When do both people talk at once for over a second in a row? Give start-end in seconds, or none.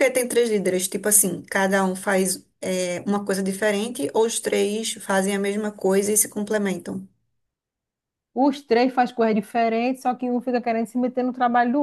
none